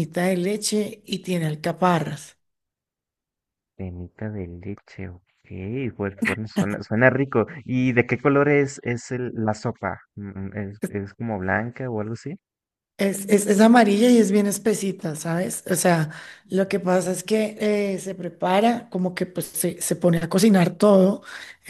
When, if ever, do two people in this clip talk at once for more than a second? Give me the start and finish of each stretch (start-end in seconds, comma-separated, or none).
none